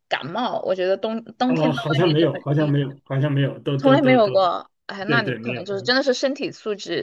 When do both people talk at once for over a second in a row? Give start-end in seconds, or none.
1.5-2.7